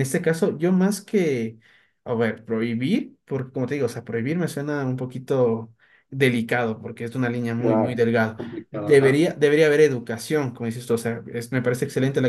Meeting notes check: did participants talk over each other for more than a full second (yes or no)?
yes